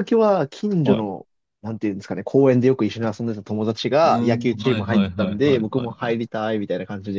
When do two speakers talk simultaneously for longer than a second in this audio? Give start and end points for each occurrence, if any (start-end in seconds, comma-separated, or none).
4.0-6.2